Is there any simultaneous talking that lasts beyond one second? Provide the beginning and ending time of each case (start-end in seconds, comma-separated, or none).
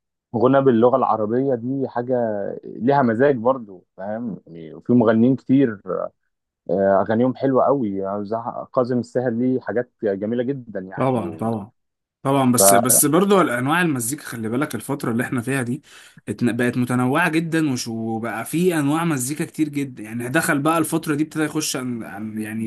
none